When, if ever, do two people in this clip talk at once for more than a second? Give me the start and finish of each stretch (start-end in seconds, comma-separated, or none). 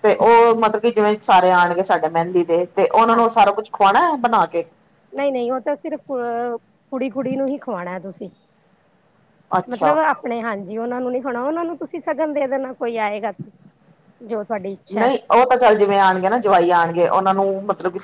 none